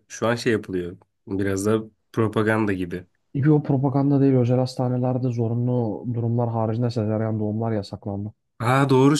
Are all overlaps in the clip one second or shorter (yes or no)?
yes